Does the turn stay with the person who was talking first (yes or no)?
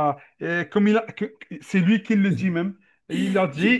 yes